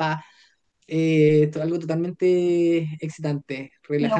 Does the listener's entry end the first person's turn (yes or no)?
no